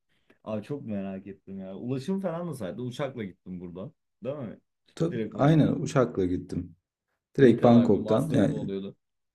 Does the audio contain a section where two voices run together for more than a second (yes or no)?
yes